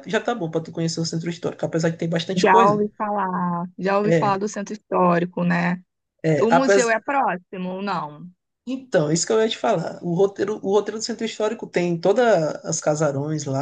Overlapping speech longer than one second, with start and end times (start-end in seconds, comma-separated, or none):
none